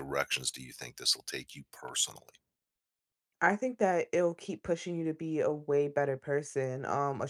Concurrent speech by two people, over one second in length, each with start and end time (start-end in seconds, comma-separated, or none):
none